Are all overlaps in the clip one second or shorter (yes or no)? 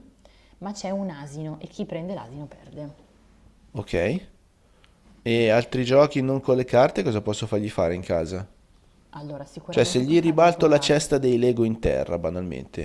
no